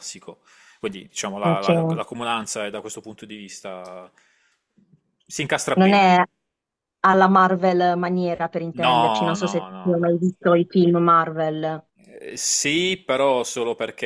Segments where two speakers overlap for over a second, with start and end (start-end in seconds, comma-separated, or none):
8.7-10.1